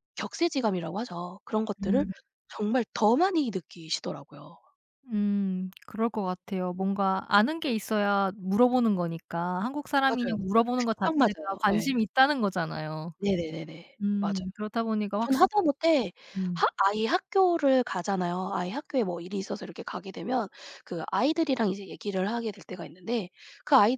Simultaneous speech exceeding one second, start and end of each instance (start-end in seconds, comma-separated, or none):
10.1-11.9